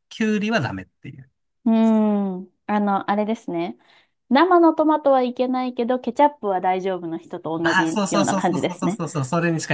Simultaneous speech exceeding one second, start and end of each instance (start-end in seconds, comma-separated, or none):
7.6-9.0